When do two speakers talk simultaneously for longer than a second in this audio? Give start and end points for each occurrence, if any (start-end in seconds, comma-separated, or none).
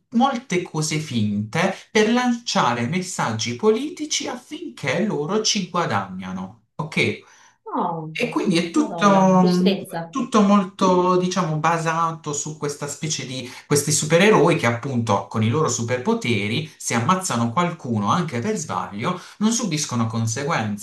none